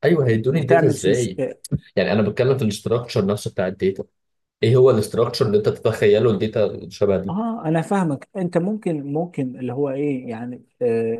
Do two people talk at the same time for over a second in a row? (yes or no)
no